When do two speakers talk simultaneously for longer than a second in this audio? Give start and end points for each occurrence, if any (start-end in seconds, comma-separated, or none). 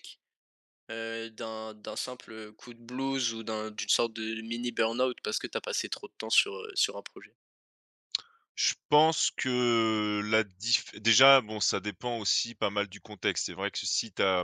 none